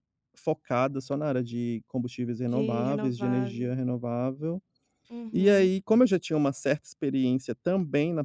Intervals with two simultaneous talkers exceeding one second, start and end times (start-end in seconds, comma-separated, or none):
2.4-3.7